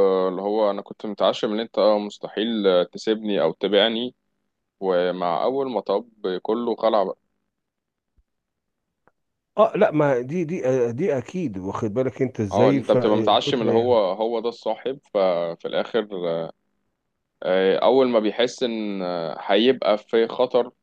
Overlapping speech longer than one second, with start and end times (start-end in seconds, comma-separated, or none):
12.5-14.0